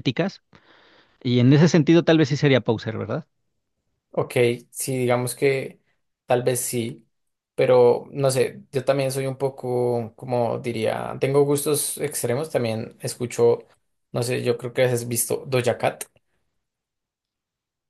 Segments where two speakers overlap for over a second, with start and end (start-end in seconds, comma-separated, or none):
none